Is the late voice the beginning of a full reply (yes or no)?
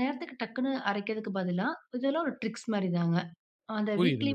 yes